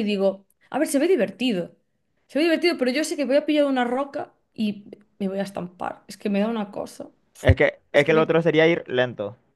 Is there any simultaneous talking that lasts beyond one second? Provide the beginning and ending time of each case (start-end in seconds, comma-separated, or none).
none